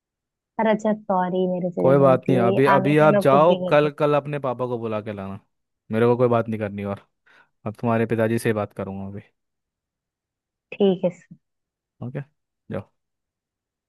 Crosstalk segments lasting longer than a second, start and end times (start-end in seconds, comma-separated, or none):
1.8-3.9